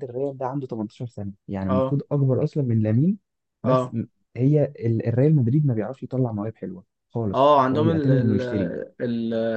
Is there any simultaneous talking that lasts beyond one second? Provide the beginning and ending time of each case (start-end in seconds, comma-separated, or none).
7.3-8.7